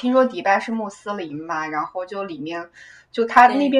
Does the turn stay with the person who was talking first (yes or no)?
yes